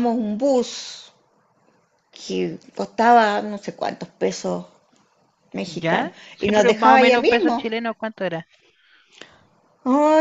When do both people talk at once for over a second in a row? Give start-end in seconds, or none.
5.7-7.6